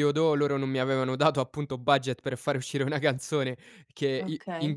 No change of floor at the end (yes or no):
yes